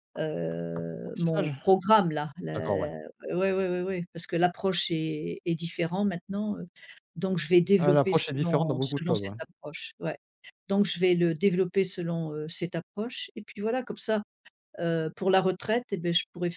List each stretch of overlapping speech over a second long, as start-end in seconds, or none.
7.8-9.3